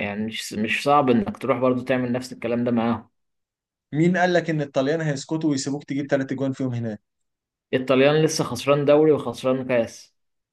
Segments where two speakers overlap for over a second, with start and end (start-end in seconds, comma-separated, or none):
none